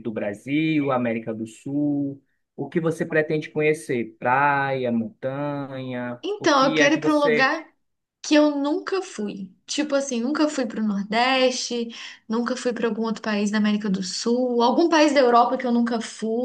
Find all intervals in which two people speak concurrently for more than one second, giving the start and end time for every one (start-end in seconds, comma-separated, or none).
6.2-7.6